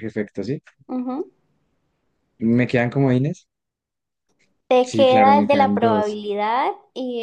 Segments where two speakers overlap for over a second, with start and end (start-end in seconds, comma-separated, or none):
4.8-6.2